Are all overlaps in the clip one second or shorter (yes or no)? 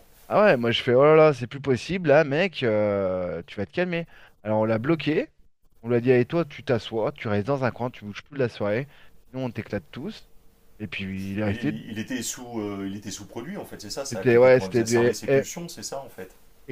no